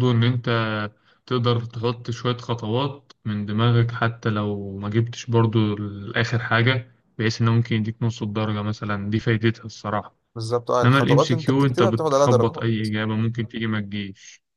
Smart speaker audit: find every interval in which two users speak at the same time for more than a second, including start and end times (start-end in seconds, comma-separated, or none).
10.8-12.9